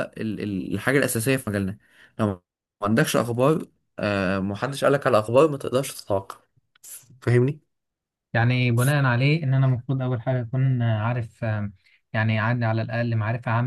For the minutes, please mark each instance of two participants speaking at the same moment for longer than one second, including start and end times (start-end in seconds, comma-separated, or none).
none